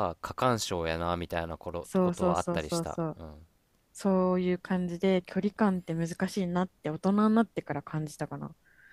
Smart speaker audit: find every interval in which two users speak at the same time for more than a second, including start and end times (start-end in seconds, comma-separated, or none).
1.8-3.2